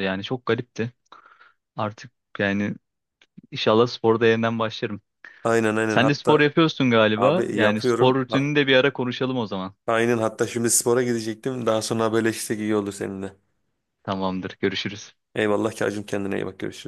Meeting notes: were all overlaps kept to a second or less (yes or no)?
no